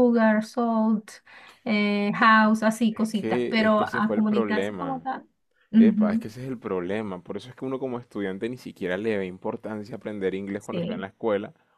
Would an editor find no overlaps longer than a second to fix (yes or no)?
no